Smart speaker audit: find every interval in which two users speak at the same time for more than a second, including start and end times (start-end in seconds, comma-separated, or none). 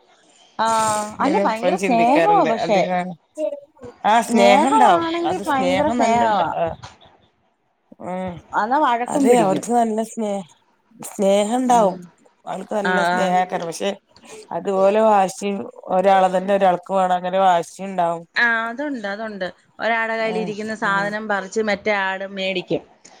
1.2-2.8, 4.2-6.4